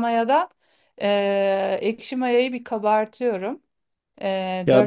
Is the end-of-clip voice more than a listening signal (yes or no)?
yes